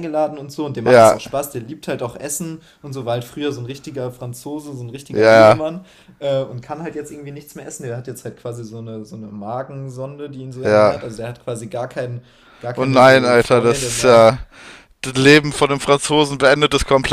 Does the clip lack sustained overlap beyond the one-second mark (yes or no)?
no